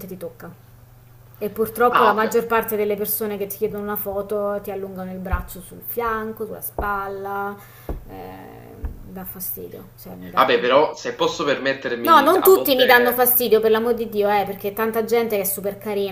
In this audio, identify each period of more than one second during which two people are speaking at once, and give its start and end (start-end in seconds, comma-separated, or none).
12.0-13.3